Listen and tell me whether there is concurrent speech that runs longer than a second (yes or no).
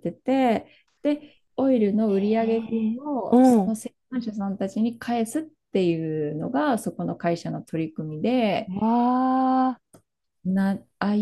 yes